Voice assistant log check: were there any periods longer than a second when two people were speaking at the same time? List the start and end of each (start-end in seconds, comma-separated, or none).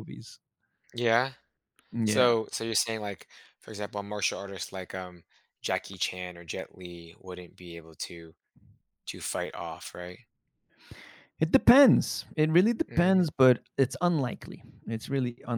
none